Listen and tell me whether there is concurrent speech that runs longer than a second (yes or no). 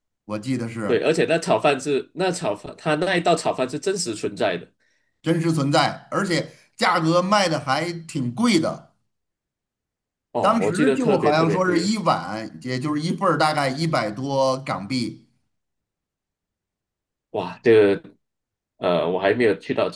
yes